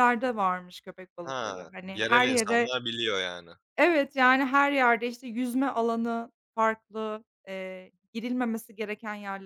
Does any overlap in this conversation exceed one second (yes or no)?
yes